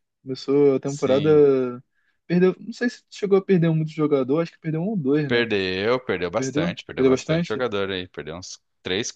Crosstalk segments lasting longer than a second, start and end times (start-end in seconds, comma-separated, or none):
6.3-7.7